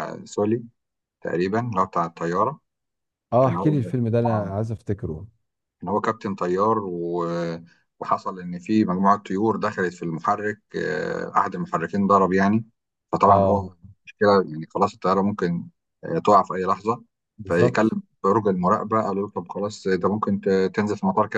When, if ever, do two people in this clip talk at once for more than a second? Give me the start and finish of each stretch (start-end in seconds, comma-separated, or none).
none